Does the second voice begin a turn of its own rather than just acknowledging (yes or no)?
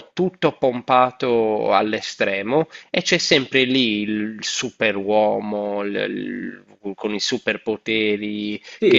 yes